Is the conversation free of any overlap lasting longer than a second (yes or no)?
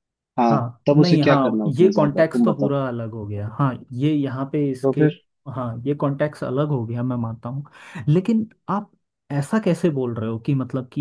no